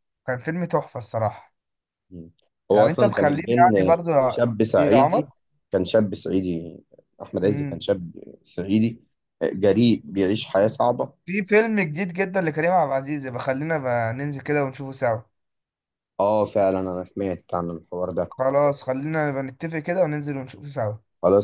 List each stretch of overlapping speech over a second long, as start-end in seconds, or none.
2.7-5.3